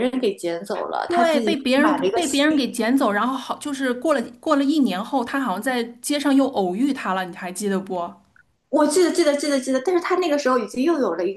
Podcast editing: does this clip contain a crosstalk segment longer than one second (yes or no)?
yes